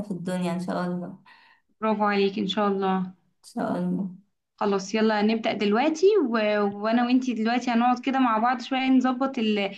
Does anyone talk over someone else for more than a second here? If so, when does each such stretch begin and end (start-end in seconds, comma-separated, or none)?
none